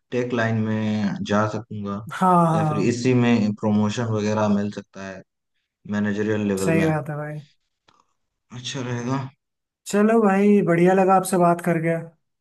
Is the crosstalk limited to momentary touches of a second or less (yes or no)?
yes